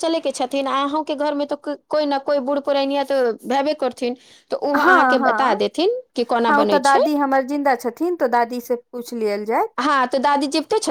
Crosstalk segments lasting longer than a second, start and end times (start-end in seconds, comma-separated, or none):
4.8-7.0